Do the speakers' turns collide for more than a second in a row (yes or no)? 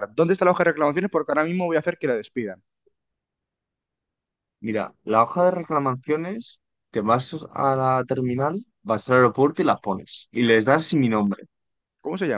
no